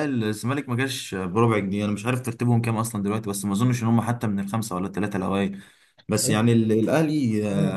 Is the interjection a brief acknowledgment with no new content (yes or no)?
yes